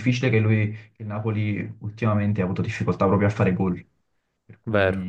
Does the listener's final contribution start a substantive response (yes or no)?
yes